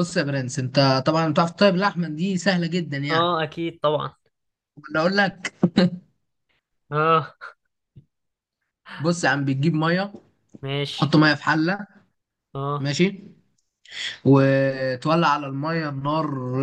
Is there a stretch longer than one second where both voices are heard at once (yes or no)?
no